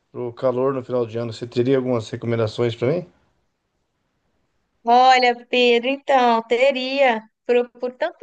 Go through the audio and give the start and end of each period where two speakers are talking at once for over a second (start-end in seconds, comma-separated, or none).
none